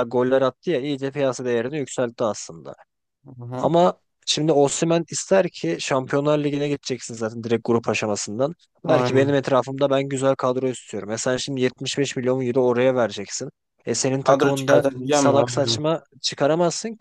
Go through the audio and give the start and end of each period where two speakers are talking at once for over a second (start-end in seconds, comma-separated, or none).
14.2-15.8